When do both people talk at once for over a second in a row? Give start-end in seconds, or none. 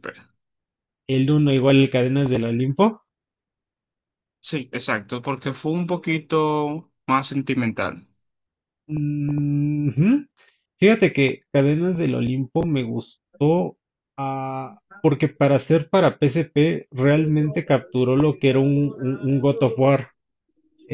17.1-19.9